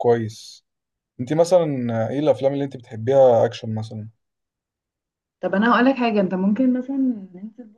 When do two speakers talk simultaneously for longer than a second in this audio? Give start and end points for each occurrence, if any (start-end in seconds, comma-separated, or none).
none